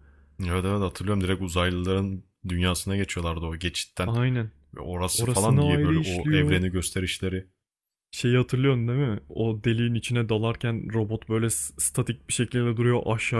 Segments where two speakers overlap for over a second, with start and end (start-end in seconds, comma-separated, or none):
5.1-6.6